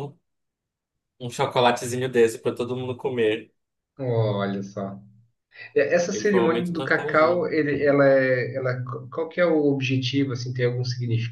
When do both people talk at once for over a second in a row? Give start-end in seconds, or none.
6.1-7.4